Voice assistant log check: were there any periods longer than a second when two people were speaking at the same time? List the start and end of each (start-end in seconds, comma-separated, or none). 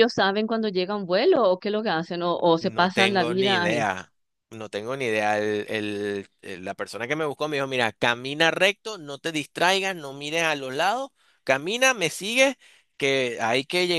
2.6-3.8